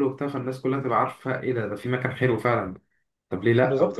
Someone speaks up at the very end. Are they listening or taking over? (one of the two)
taking over